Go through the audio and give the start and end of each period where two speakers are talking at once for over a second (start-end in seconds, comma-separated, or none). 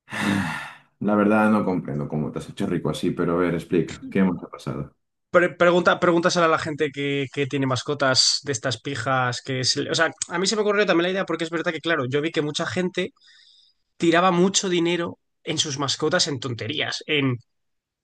none